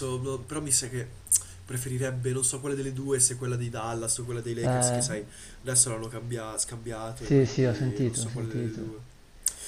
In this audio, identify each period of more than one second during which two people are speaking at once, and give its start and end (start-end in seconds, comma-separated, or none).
7.1-8.8